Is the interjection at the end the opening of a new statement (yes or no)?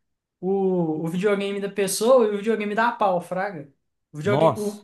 no